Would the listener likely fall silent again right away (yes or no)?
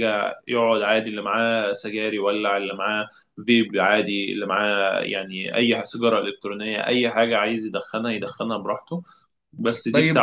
no